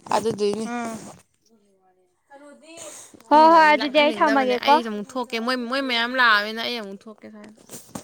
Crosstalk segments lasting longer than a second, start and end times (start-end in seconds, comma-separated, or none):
3.3-4.8